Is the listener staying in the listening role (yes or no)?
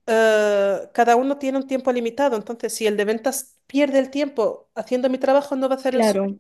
no